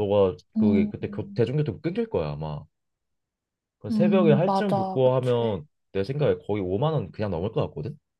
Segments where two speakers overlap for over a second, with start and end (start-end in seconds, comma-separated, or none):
3.9-5.6